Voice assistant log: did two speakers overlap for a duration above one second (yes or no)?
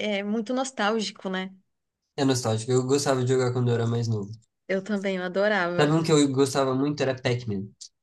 no